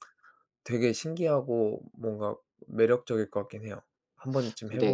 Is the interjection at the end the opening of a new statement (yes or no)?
yes